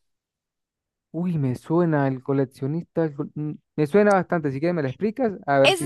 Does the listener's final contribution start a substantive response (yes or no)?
yes